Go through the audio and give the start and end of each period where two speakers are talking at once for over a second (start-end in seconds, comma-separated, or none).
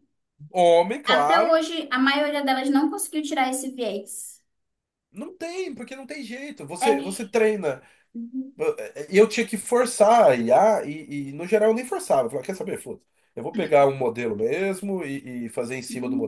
none